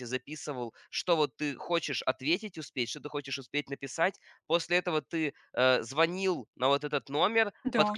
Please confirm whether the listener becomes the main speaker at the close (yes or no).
no